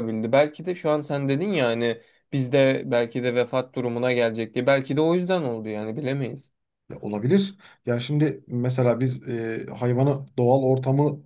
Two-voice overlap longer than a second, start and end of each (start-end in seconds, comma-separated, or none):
none